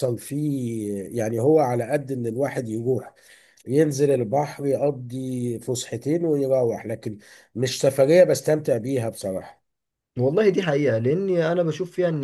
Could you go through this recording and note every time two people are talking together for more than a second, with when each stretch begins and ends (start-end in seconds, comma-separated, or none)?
none